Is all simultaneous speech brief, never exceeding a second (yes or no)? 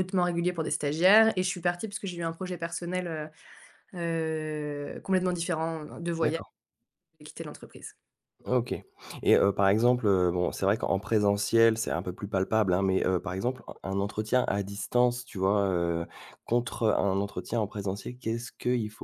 yes